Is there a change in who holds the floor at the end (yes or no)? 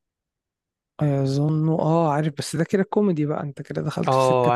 yes